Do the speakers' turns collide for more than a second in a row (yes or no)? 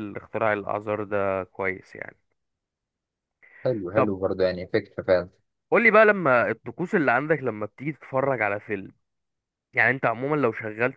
no